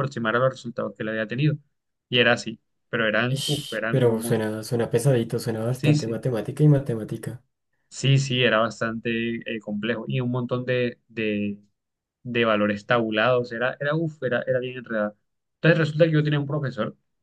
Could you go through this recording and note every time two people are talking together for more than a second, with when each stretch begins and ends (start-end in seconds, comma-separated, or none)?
3.3-4.5